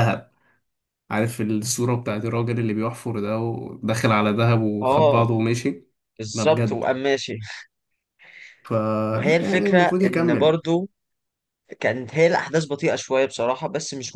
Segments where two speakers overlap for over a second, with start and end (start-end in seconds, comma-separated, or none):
9.1-10.6